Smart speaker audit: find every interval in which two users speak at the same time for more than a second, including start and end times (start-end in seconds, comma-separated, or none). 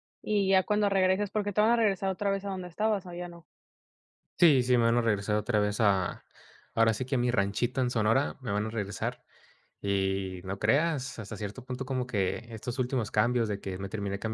none